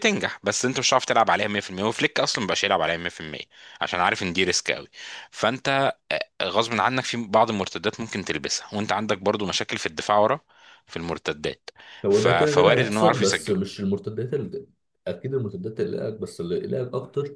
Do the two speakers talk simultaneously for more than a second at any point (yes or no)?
yes